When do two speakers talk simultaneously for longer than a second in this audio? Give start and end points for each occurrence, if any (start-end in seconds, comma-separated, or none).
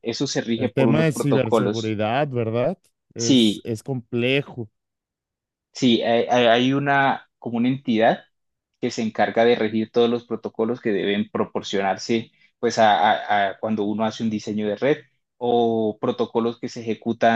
0.6-1.9